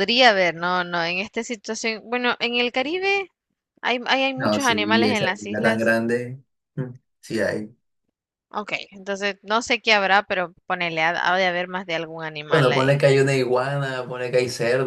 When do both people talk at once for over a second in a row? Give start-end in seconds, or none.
4.4-5.9